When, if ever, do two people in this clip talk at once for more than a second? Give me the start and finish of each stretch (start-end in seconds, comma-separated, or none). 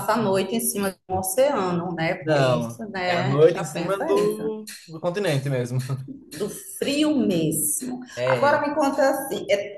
2.2-4.5